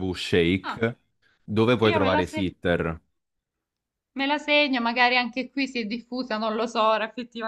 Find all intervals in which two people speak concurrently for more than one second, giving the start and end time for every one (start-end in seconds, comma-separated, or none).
none